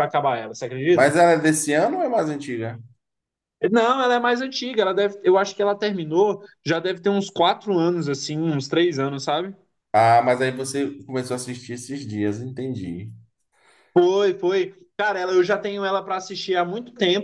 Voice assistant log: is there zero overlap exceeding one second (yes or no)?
yes